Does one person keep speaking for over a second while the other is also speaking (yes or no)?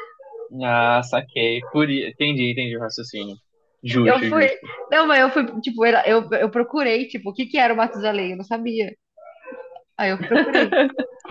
no